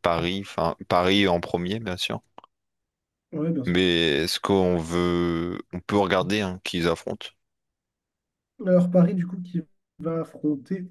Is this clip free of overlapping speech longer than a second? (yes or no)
yes